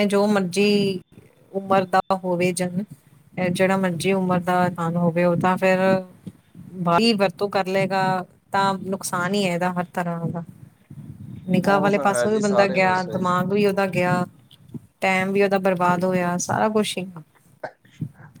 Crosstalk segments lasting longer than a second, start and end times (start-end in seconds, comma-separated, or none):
11.6-13.2